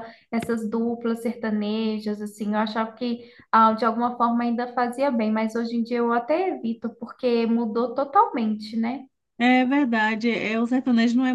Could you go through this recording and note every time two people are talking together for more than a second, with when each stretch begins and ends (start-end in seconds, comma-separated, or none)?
none